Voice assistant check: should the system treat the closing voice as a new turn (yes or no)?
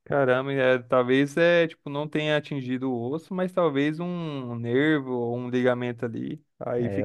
yes